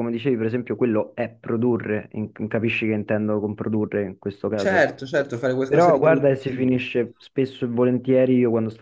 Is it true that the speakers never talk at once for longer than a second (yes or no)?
no